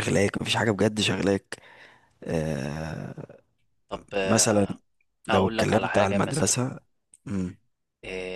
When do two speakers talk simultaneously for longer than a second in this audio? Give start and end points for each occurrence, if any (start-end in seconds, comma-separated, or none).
5.3-6.6